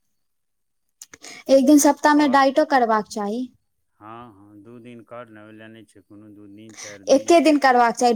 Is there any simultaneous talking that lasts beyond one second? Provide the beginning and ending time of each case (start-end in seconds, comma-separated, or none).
none